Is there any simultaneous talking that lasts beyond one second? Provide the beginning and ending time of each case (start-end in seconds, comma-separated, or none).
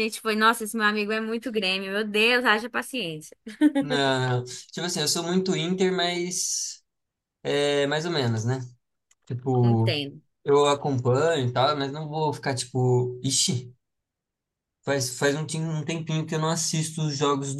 none